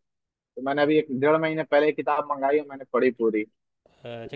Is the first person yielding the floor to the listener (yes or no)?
yes